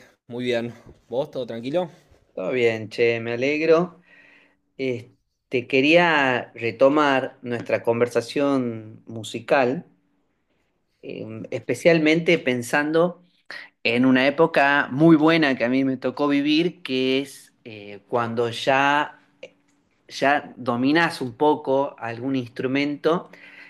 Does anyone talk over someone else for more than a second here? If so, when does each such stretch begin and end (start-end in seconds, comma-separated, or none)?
none